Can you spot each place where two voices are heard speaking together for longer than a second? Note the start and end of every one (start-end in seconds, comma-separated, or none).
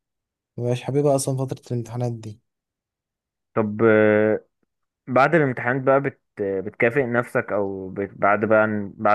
none